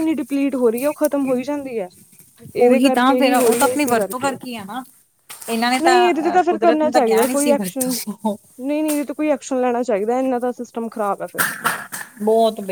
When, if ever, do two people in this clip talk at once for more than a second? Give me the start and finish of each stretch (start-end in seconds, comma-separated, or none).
2.6-4.4, 5.8-8.0